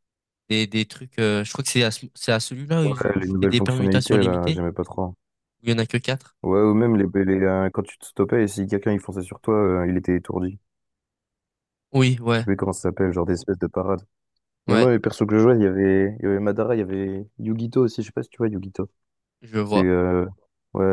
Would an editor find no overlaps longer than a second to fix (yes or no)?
no